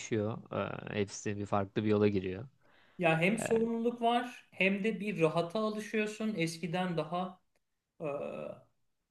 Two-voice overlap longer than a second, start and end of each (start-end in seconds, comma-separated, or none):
none